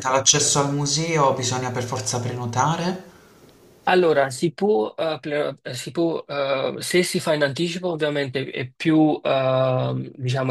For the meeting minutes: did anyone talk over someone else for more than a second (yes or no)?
no